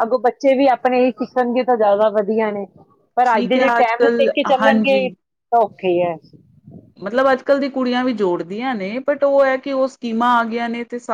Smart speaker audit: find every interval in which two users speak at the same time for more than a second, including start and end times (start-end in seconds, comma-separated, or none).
3.3-5.0